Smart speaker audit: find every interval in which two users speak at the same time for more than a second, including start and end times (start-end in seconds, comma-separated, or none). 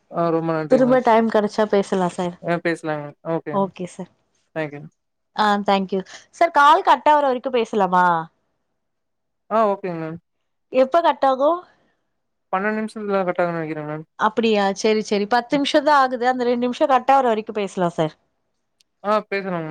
none